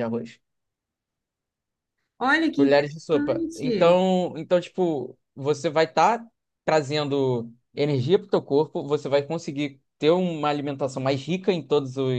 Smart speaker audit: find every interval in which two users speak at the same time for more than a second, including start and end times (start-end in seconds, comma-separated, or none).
2.5-4.0